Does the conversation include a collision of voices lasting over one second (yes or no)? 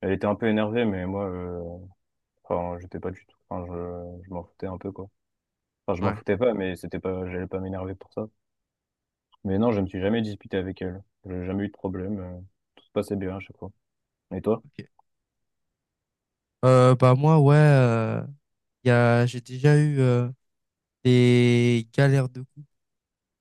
no